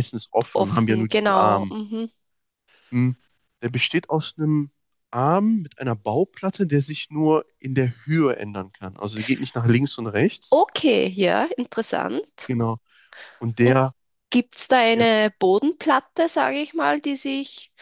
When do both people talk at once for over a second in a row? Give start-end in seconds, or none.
0.5-1.7